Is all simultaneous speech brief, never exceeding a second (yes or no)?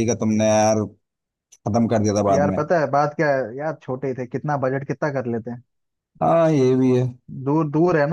yes